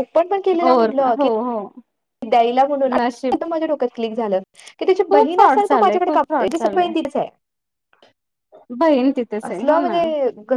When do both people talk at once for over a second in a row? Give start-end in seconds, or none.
5.1-6.9